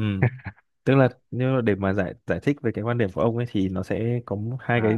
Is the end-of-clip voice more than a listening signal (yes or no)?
no